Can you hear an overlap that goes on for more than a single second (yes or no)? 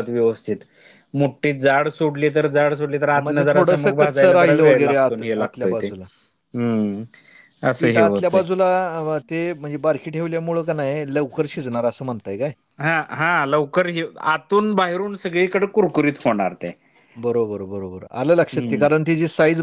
yes